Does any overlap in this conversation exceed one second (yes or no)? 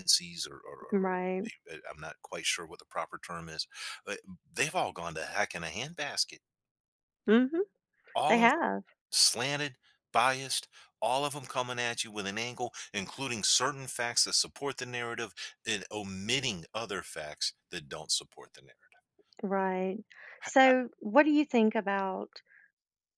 no